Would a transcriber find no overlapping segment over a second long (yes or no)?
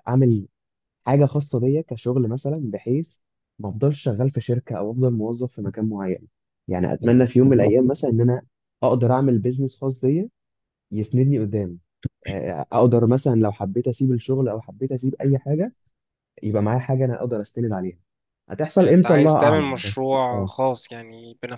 no